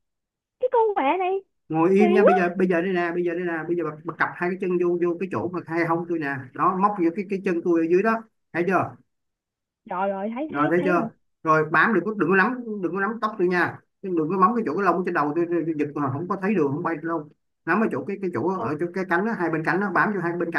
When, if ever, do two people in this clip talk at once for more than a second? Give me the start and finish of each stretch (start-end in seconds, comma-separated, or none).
none